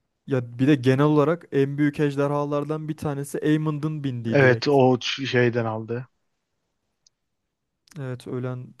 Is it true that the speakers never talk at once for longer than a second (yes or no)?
yes